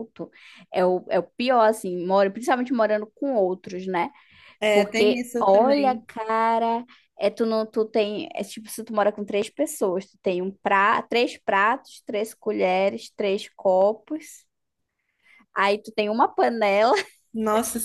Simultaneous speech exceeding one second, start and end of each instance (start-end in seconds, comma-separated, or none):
4.7-6.0